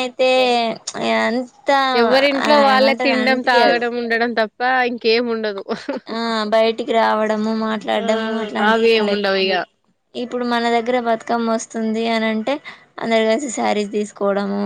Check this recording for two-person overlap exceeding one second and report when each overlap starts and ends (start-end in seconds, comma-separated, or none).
none